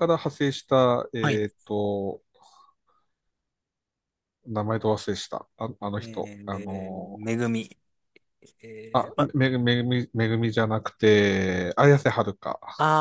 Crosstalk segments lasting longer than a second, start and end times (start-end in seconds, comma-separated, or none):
6.0-7.2